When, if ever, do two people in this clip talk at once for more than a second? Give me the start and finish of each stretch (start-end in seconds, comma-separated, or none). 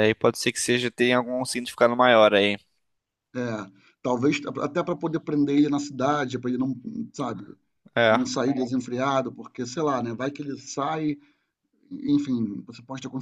none